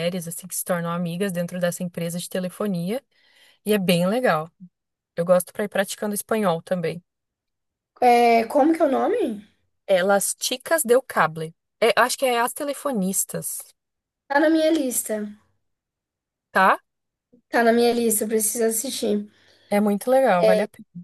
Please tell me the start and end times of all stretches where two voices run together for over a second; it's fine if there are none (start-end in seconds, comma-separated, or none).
none